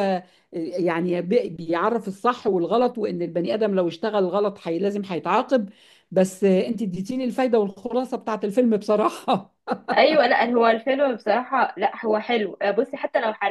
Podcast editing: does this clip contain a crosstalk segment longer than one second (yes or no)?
no